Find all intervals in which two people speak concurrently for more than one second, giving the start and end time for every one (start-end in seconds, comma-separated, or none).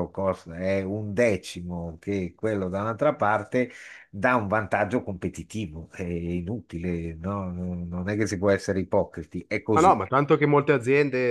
none